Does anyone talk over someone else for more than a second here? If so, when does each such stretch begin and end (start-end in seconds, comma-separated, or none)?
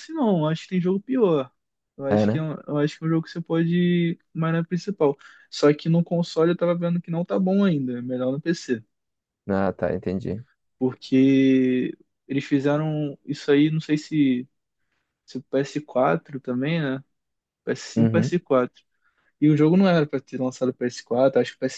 none